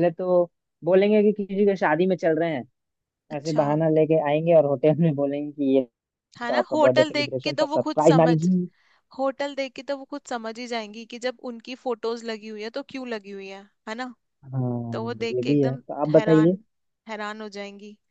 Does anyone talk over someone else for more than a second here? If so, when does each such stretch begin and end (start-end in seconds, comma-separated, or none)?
6.5-8.3, 14.9-16.5